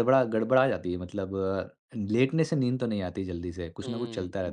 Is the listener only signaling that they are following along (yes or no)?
no